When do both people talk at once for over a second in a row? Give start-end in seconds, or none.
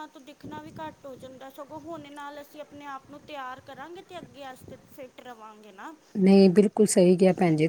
none